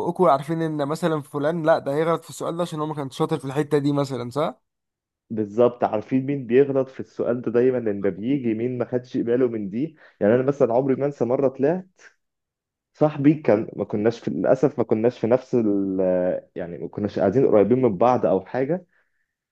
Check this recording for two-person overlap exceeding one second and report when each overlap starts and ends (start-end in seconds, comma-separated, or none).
none